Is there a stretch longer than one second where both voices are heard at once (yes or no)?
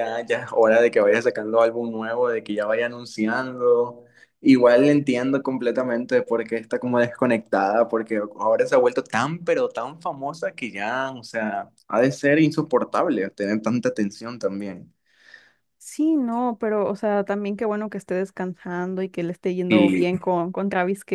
no